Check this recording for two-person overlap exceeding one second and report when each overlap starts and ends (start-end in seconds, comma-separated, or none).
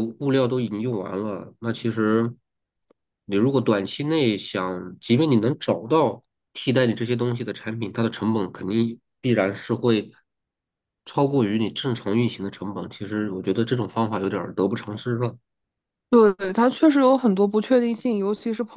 none